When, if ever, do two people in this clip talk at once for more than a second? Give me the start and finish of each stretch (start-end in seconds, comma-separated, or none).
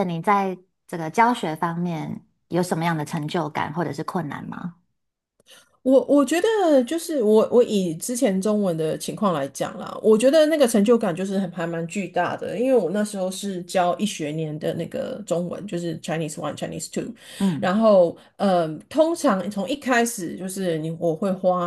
none